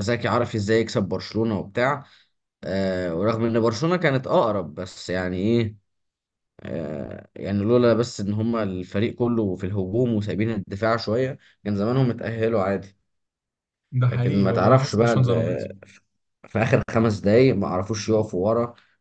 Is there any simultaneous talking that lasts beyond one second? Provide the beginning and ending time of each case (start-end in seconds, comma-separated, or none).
14.1-15.7